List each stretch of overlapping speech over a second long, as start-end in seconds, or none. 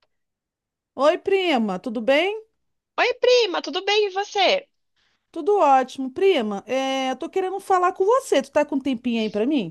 none